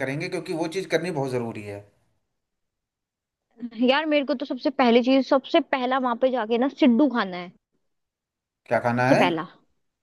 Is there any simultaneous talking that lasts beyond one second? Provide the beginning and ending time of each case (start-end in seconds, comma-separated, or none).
none